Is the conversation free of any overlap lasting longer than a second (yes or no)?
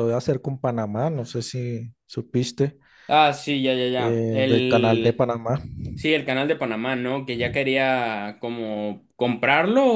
no